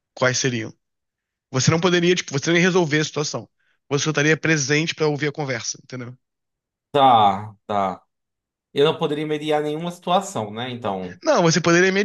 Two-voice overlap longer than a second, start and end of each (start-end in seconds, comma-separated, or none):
none